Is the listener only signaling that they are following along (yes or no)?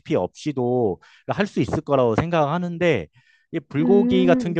yes